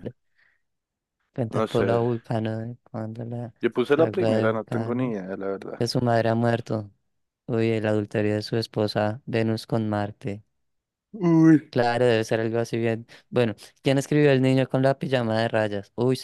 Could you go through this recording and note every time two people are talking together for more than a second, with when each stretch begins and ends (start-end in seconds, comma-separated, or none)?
3.6-5.2